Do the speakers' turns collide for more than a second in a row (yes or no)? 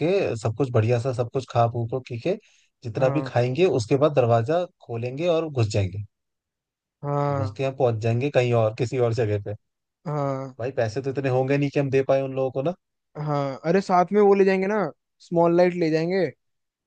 no